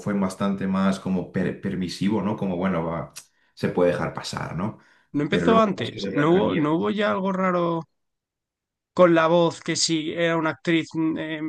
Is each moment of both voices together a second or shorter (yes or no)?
no